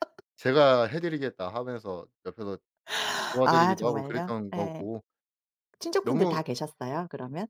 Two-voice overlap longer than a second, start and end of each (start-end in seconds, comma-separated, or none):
3.4-4.9